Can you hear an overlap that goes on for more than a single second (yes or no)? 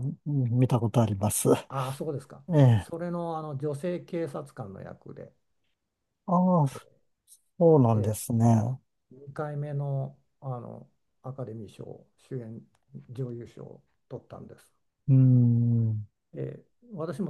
no